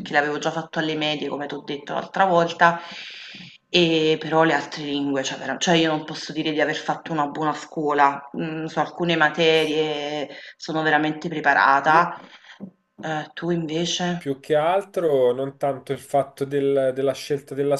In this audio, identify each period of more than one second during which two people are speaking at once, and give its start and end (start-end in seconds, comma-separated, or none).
none